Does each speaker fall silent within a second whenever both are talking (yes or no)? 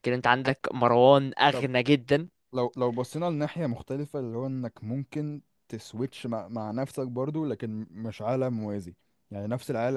yes